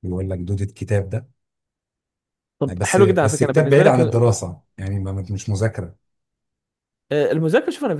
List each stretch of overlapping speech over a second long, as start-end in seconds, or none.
2.7-4.3